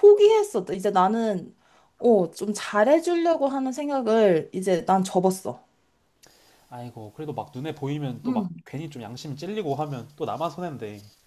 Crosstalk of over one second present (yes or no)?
no